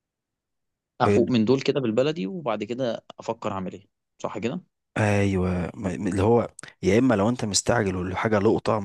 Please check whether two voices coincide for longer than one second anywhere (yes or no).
no